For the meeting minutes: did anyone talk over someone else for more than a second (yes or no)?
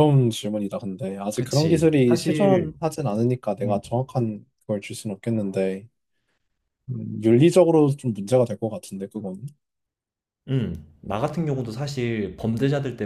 yes